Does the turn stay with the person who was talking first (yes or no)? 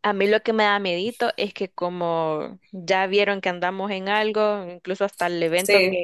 yes